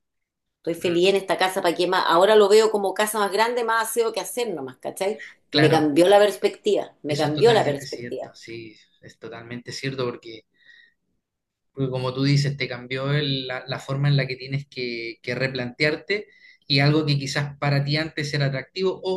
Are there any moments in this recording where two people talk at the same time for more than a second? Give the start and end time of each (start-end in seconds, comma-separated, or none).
7.1-8.3